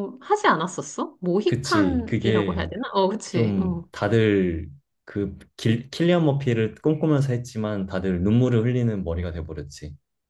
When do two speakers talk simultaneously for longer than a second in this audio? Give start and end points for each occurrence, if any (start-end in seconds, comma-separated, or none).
1.4-2.6